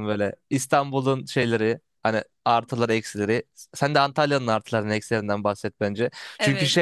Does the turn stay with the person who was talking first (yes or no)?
yes